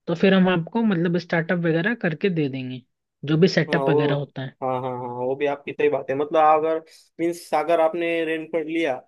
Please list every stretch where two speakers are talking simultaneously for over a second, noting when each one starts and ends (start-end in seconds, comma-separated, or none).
none